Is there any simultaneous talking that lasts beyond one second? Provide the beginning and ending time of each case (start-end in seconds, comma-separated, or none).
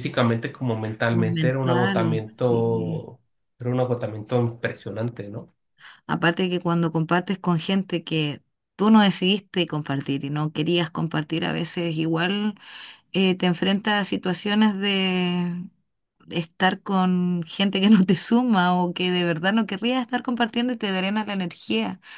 1.1-3.0